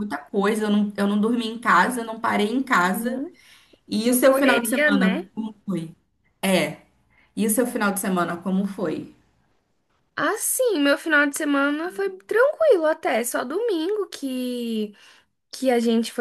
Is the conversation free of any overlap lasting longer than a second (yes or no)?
no